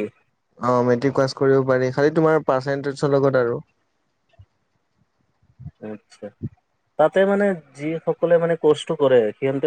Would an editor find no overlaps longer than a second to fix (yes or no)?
yes